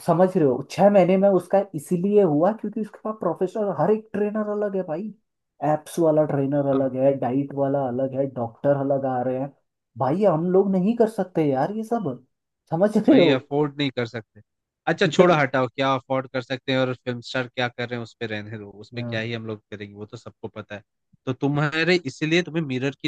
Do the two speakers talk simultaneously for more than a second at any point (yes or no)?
no